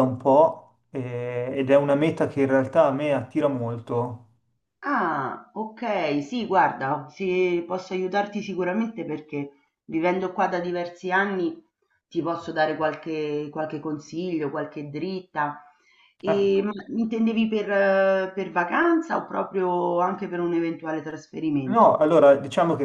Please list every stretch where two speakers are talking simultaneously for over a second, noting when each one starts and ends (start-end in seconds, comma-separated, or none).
none